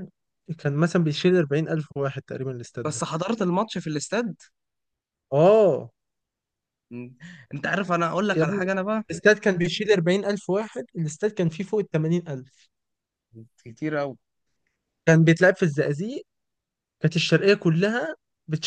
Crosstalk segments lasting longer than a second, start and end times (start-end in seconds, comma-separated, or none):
none